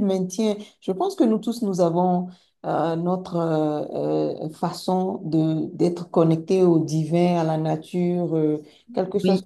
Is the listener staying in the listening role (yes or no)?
yes